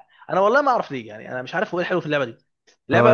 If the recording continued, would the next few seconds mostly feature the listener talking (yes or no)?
yes